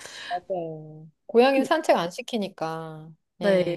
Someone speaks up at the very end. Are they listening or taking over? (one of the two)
taking over